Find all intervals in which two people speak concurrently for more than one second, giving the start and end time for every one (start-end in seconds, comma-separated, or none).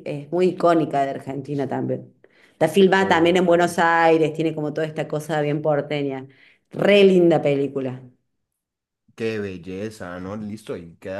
none